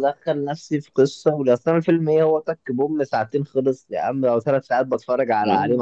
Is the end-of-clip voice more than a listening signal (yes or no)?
yes